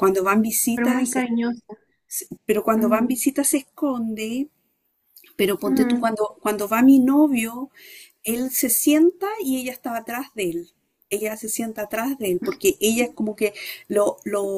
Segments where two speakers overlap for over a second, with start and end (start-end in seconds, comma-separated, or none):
none